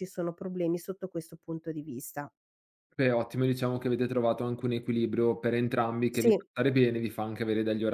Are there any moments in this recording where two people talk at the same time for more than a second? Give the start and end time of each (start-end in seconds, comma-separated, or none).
none